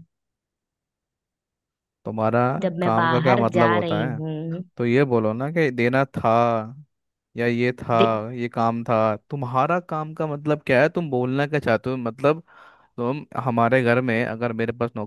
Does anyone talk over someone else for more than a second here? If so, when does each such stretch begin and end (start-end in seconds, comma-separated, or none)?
2.8-4.2